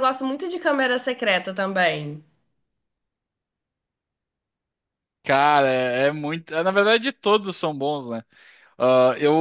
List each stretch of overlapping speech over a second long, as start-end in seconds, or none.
none